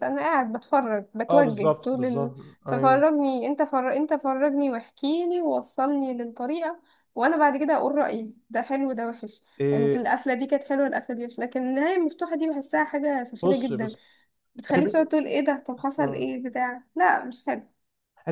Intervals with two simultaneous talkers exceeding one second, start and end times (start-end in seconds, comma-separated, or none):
1.3-3.0